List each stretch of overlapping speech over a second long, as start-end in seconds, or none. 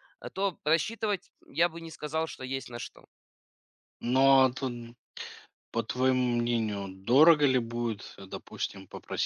none